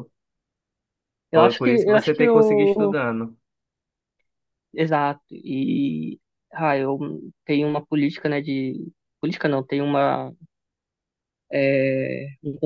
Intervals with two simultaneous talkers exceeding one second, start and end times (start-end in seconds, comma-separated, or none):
1.3-3.0